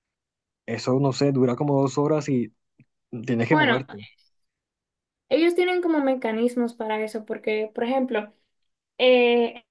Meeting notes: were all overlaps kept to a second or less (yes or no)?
yes